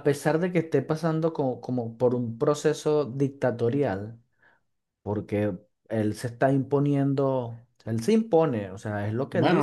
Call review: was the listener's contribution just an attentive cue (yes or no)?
no